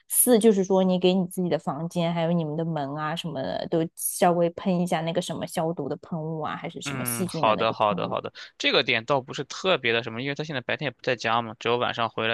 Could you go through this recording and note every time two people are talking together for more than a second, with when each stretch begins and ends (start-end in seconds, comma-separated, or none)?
6.9-8.2